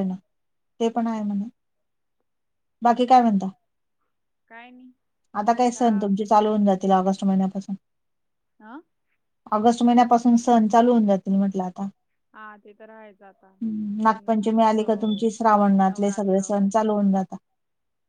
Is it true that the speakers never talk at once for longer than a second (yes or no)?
no